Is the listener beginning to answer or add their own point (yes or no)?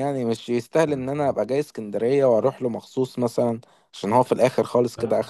yes